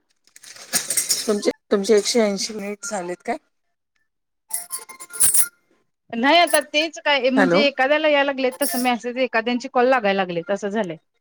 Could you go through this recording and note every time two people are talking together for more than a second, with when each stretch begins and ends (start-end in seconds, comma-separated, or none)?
none